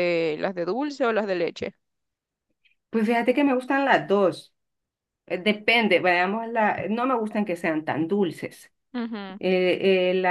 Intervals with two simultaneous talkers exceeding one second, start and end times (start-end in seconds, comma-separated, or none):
none